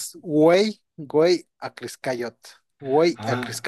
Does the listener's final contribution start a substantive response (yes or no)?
yes